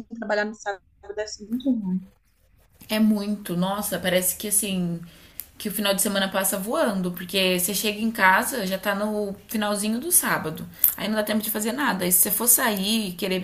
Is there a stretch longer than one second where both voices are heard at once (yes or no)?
no